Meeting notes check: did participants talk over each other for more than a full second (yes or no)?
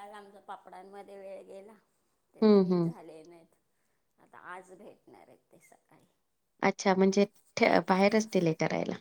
no